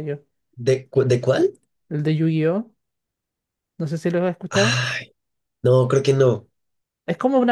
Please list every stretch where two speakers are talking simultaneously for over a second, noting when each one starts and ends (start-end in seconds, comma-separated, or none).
none